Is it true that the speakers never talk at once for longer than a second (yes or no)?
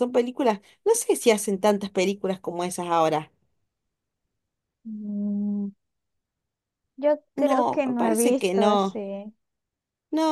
no